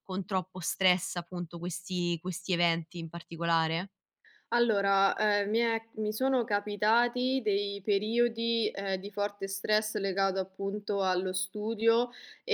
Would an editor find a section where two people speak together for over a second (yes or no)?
no